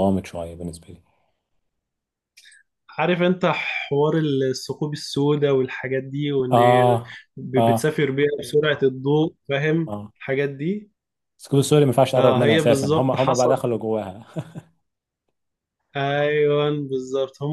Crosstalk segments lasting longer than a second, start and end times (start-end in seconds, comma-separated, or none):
12.2-13.6